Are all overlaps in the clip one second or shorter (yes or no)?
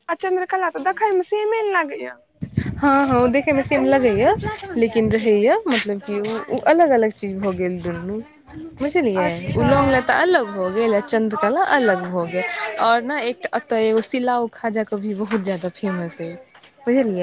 yes